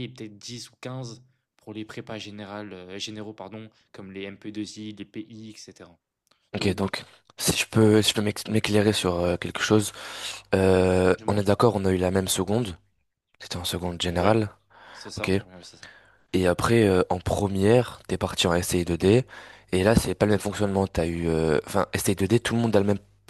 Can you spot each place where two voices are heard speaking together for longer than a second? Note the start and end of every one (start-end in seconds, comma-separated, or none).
none